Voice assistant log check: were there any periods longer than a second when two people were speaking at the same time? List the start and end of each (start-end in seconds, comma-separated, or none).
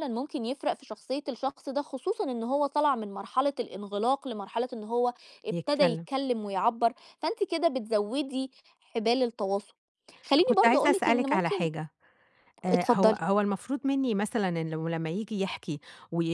10.4-11.7